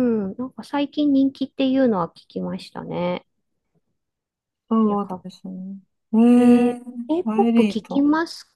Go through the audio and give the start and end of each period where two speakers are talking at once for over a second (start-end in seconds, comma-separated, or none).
6.8-8.1